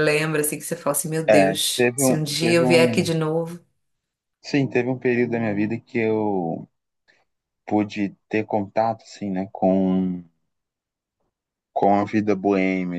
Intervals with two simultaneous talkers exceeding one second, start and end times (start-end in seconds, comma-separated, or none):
1.3-3.1